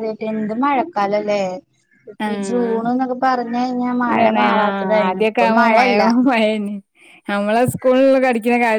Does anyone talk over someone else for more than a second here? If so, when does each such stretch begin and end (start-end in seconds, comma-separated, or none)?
4.1-5.9